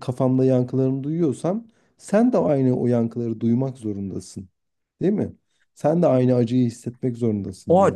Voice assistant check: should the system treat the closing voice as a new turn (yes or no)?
yes